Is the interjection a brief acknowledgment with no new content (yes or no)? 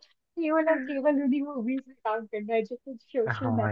yes